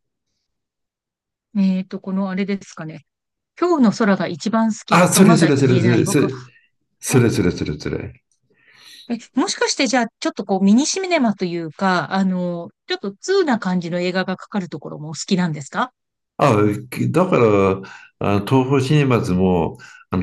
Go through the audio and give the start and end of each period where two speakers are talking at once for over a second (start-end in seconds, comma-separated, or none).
4.9-6.3